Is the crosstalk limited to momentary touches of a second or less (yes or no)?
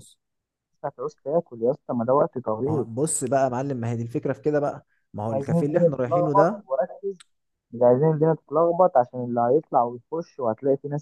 no